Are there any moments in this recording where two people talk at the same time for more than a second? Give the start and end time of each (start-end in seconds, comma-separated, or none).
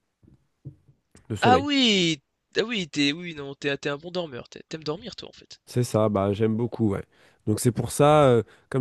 none